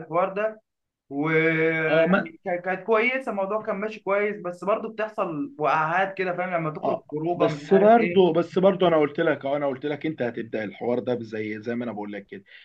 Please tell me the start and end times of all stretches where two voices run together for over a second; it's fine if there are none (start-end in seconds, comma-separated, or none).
6.8-8.2